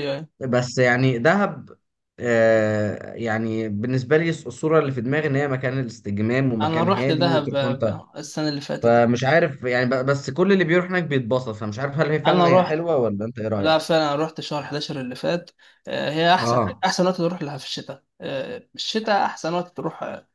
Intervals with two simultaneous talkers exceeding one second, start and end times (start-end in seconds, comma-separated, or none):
6.6-7.9